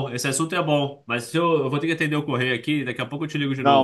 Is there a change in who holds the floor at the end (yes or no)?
yes